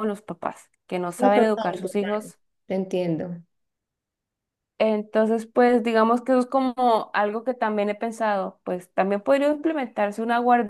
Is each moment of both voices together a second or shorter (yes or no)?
no